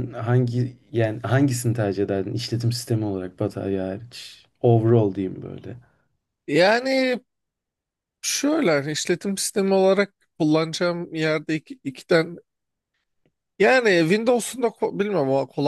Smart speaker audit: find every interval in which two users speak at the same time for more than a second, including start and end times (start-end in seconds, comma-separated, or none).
none